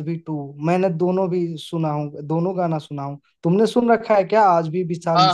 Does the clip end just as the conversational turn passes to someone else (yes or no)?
yes